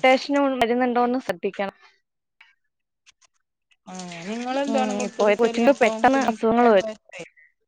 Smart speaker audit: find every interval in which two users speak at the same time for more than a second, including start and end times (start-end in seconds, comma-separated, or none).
4.7-6.9